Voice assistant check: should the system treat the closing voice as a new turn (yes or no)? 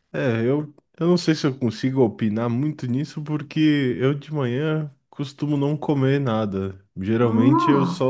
no